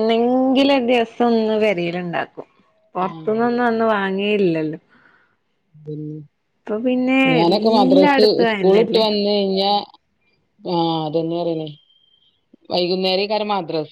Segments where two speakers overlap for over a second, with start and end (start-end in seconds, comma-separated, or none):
7.3-9.0